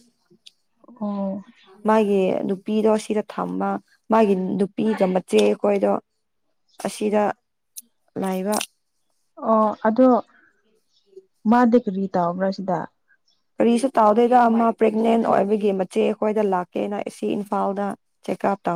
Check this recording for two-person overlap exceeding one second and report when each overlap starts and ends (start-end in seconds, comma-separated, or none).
none